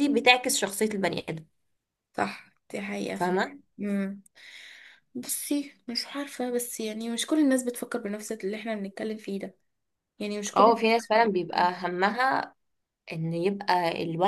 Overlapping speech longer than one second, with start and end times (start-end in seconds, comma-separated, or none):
none